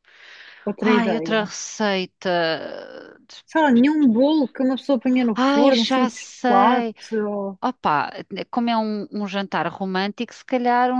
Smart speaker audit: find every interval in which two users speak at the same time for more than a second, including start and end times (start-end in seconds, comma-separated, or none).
5.3-6.9